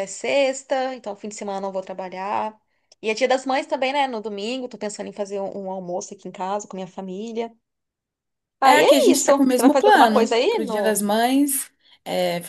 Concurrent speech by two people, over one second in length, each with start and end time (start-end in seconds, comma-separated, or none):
8.6-11.0